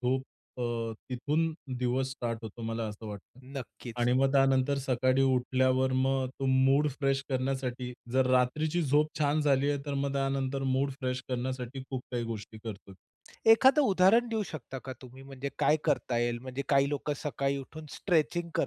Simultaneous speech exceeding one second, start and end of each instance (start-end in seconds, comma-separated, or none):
none